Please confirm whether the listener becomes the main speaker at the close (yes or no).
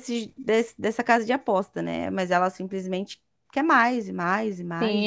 yes